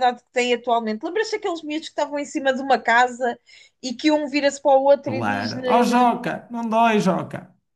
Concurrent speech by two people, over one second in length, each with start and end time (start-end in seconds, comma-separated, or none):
5.0-6.3